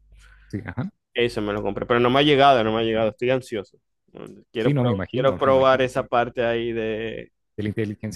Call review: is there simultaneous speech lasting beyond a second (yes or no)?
yes